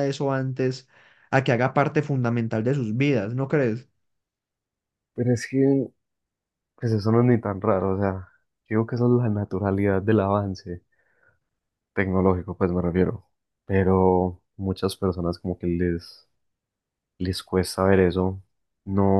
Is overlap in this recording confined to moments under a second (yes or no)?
yes